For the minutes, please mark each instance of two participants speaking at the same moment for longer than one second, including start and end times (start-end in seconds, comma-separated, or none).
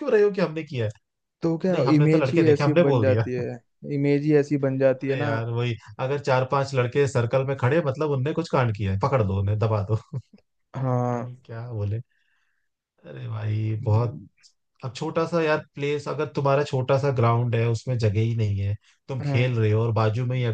1.7-3.3